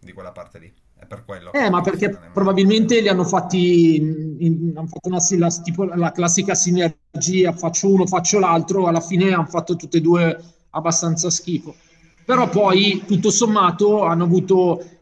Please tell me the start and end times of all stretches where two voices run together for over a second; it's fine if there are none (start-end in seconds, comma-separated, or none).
1.5-3.0